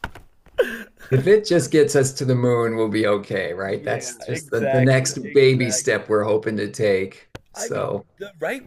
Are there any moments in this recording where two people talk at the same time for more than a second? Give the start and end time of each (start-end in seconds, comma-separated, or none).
3.6-6.0